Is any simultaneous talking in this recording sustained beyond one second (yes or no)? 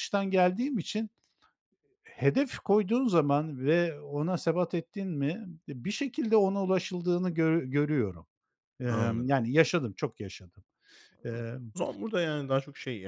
no